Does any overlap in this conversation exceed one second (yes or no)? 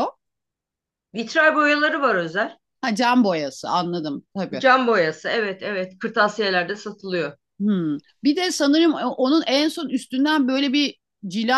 no